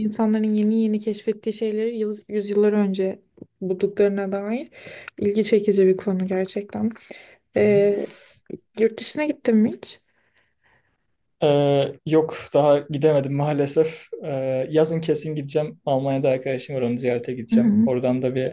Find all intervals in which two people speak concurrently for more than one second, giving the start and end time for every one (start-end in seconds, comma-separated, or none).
none